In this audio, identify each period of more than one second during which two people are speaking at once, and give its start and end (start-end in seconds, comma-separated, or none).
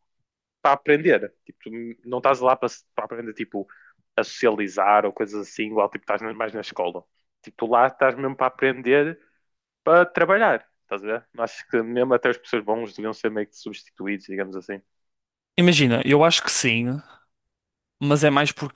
none